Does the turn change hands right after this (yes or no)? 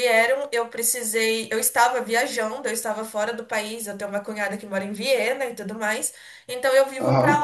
no